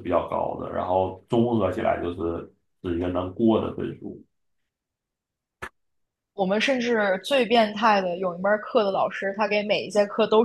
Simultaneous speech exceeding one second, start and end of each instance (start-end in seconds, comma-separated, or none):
none